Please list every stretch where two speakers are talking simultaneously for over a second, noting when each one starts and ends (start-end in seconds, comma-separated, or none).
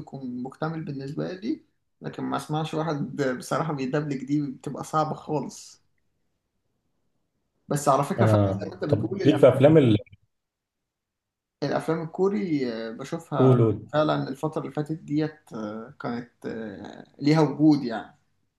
8.2-9.6